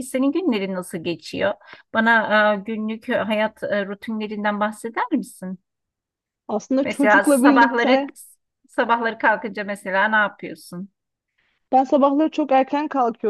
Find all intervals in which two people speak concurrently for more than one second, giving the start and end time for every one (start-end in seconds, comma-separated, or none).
6.8-8.1